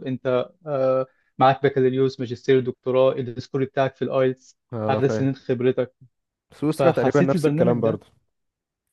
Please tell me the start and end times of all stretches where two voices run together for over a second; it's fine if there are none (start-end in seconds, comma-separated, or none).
6.8-8.0